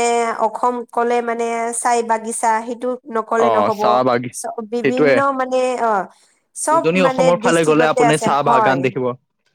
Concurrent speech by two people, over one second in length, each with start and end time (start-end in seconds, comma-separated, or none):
6.7-8.8